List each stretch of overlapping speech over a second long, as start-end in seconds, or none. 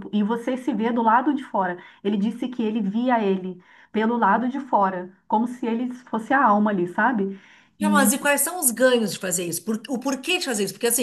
none